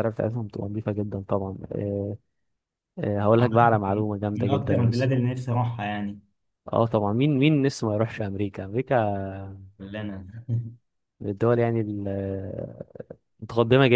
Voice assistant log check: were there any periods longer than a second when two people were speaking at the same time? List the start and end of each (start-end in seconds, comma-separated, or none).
3.4-5.1